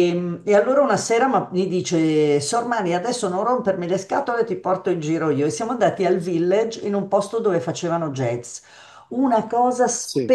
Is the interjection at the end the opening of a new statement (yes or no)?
no